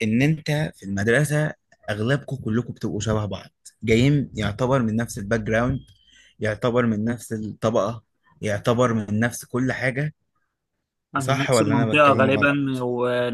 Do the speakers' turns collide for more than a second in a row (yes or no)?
yes